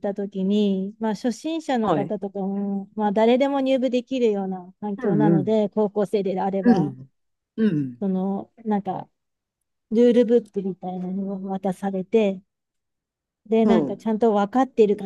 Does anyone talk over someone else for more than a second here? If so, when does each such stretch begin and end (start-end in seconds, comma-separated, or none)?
none